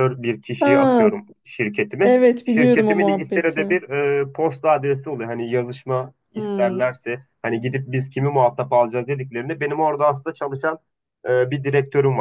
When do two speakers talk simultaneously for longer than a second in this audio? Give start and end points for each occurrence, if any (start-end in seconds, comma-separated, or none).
2.0-3.8